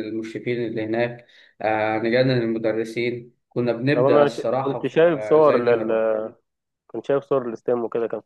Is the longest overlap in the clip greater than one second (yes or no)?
yes